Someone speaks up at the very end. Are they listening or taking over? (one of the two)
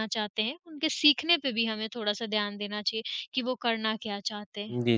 taking over